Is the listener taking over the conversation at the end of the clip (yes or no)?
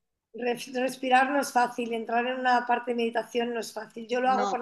no